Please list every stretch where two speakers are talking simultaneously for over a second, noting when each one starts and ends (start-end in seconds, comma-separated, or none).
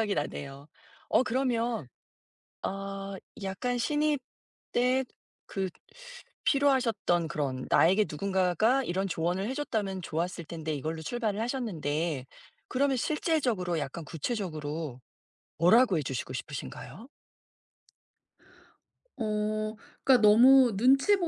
none